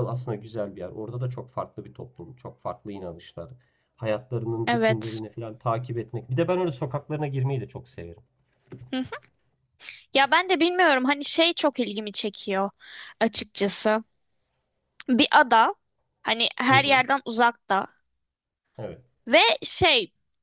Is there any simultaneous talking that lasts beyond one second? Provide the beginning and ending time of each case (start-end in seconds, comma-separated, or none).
none